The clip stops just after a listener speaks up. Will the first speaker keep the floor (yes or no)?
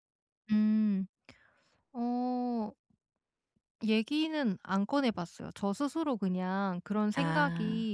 yes